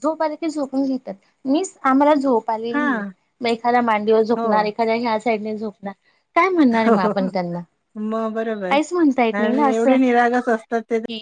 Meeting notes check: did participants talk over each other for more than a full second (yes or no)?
no